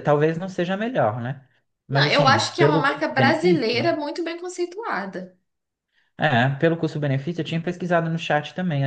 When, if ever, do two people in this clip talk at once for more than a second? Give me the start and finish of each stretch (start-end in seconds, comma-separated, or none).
1.9-4.0